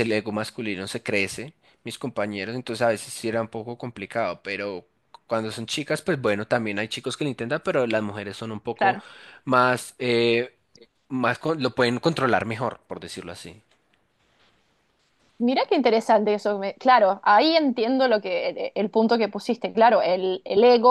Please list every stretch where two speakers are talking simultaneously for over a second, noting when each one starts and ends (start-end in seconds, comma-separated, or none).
none